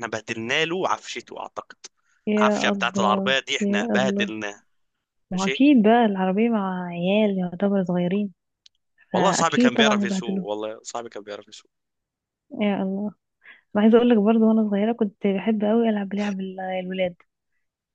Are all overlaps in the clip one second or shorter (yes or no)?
no